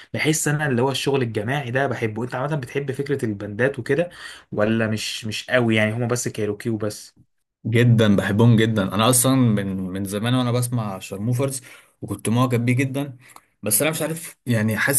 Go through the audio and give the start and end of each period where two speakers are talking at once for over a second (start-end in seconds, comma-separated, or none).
none